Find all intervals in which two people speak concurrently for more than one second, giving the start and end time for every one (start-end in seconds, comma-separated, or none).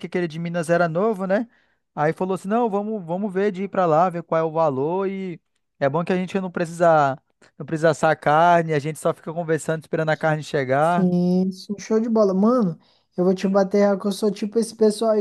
none